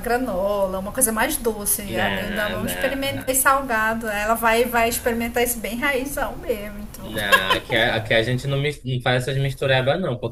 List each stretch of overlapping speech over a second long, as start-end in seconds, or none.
1.9-3.5